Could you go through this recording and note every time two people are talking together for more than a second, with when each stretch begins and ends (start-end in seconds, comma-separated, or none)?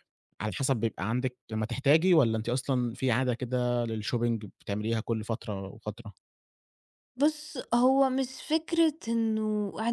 none